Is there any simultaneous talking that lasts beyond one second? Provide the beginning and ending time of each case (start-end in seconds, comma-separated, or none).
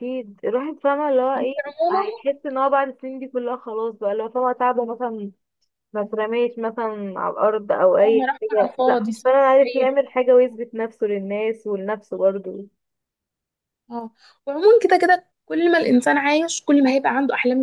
8.0-9.9